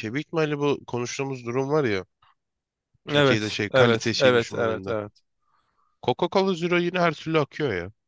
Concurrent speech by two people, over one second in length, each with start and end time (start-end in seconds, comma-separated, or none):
3.1-5.0